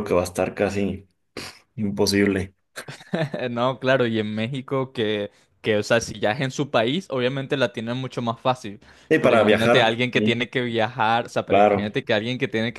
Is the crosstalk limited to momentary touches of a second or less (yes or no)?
no